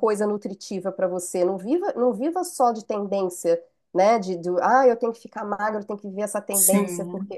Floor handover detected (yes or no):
no